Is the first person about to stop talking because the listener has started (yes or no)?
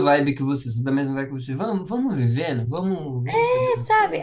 yes